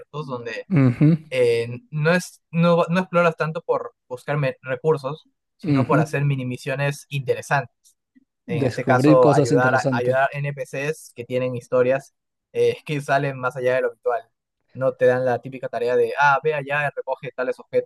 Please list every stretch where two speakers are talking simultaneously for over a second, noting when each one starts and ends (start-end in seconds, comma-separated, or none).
8.6-10.2